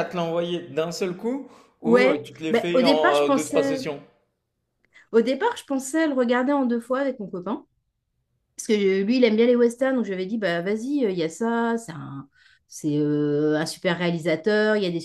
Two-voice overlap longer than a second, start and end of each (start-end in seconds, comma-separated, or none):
1.8-3.8